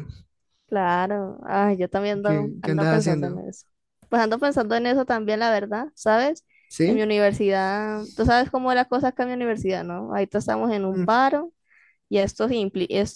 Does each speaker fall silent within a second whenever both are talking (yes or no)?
no